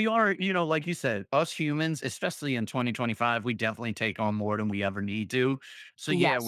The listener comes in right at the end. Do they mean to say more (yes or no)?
no